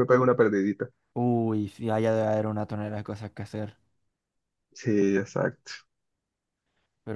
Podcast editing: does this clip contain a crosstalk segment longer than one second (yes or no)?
no